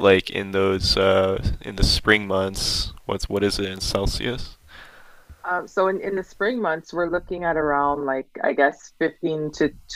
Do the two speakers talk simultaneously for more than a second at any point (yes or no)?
no